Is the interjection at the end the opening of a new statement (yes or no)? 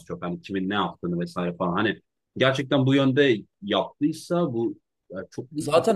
yes